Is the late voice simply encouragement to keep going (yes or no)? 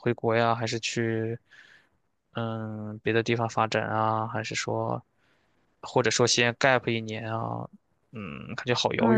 no